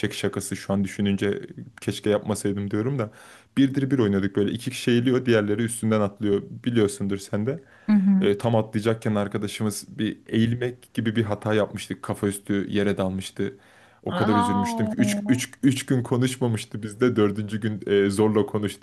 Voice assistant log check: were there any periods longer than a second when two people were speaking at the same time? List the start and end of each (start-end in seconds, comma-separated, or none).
14.1-15.4